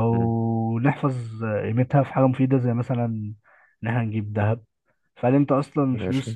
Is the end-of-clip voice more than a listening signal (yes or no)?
no